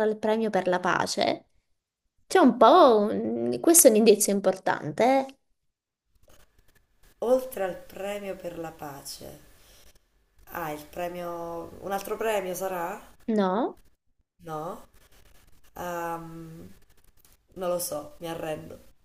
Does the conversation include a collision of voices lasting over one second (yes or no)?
no